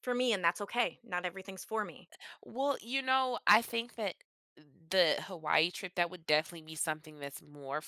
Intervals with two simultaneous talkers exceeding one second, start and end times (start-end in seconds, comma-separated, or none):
none